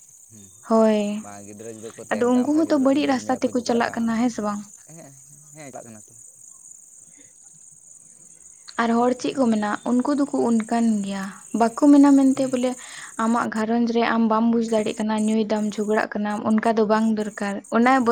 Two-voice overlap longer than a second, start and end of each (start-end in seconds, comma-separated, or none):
2.1-4.1